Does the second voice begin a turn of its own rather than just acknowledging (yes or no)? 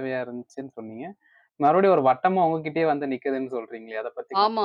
yes